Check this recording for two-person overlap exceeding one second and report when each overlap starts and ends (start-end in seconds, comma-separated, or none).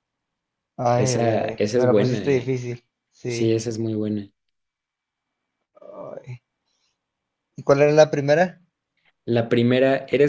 0.9-2.6